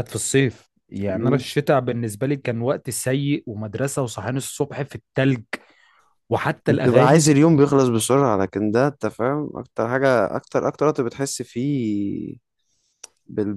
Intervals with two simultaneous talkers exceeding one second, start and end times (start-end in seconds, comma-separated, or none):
none